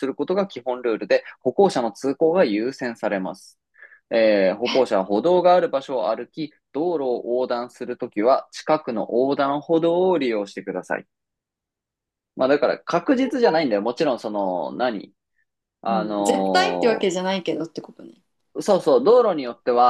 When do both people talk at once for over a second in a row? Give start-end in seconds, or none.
15.9-17.2